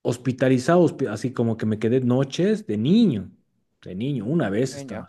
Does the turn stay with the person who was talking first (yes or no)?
yes